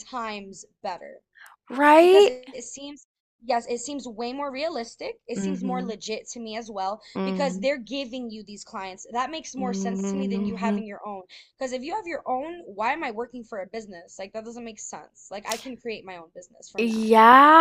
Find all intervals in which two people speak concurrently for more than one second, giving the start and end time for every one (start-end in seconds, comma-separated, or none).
9.6-10.8